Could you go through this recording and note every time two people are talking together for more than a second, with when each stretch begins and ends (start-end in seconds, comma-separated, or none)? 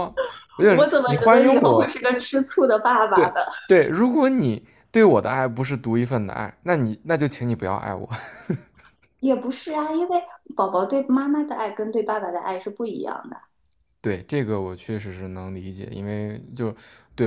0.7-2.0